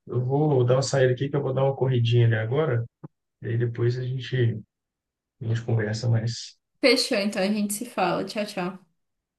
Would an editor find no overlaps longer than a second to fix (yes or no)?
yes